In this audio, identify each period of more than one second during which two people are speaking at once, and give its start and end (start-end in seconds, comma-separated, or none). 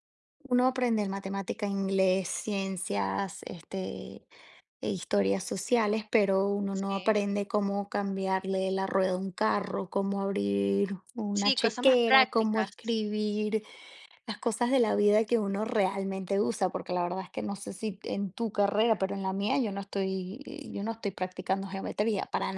11.3-12.7